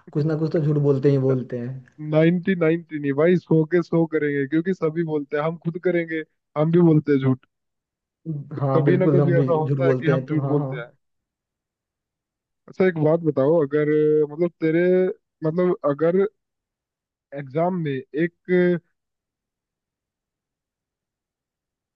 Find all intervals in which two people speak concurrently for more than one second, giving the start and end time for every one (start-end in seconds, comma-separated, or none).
8.6-10.9